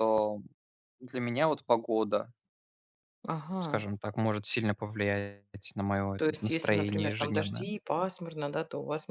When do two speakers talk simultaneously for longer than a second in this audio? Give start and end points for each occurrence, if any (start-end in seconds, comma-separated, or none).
6.2-7.7